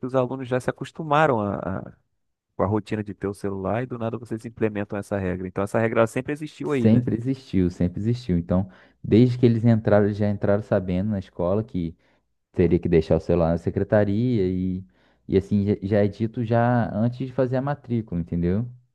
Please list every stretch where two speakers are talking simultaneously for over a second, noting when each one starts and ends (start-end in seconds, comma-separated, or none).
none